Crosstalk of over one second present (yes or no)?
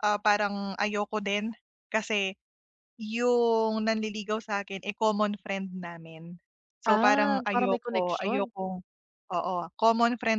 yes